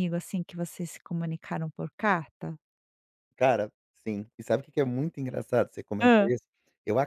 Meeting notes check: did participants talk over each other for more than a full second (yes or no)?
no